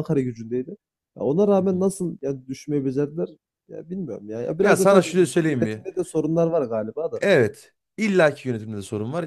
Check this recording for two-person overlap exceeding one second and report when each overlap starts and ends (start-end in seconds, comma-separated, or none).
4.6-5.9